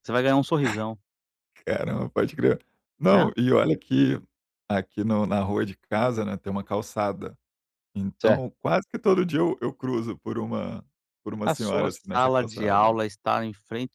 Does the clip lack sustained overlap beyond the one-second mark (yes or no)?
no